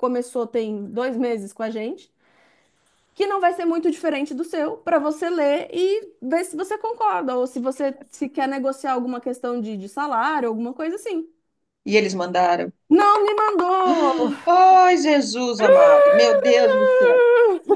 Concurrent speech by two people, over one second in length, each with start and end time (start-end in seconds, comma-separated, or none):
none